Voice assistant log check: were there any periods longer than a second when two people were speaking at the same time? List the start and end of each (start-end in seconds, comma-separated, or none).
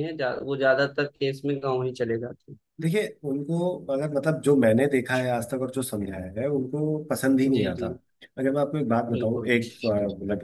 none